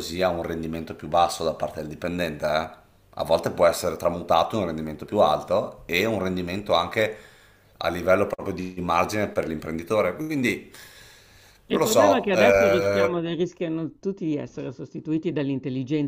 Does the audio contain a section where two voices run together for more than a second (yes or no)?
yes